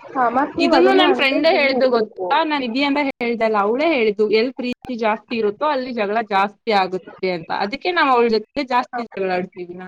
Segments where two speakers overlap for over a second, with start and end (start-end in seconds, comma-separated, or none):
0.7-2.2